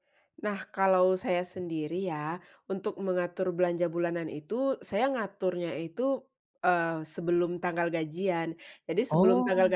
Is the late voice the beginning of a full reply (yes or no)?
no